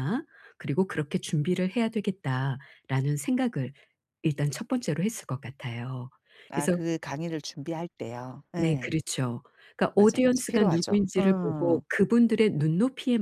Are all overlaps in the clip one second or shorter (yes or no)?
no